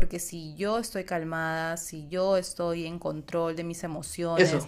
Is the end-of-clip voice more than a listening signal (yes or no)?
no